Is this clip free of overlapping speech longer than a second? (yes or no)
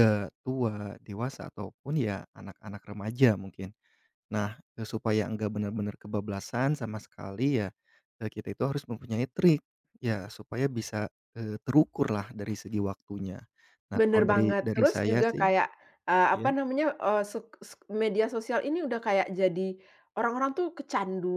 no